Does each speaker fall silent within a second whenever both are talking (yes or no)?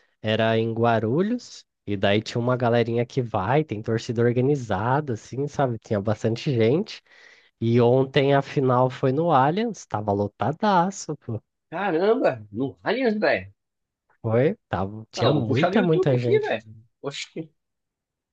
no